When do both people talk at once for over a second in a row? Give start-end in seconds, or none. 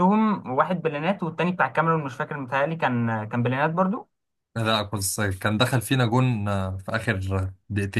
none